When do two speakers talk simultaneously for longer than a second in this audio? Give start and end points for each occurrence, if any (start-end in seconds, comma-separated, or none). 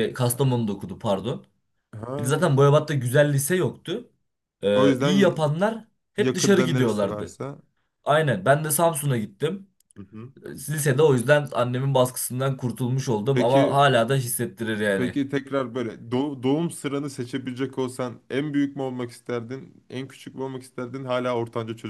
6.2-7.4